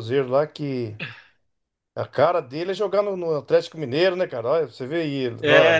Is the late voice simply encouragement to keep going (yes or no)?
no